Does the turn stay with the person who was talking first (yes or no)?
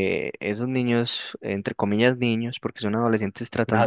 no